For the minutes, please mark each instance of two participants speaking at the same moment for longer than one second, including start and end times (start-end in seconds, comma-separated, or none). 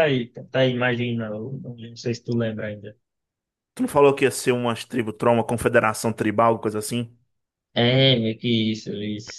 none